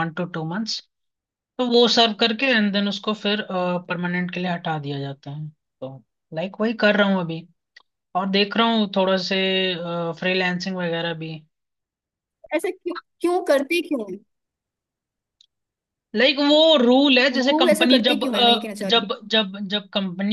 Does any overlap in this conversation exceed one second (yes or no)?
yes